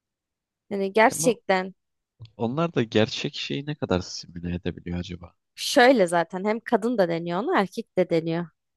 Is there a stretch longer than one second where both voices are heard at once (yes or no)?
no